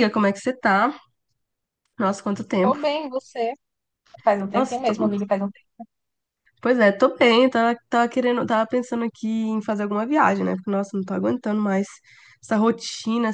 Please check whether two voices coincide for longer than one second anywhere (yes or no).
no